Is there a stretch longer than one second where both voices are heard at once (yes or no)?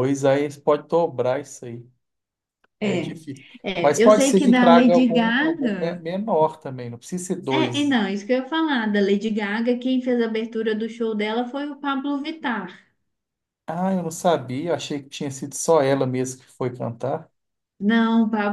yes